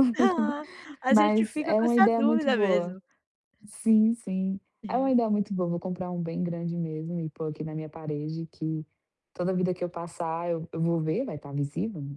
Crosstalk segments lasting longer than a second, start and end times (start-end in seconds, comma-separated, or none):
1.1-3.0